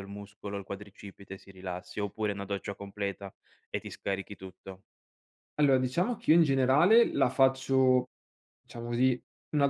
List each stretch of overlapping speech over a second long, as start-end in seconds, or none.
none